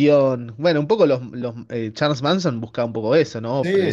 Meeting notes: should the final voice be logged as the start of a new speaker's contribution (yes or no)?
yes